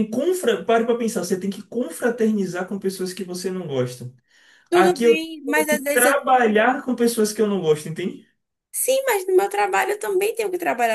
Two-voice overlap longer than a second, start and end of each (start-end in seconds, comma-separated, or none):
4.7-6.2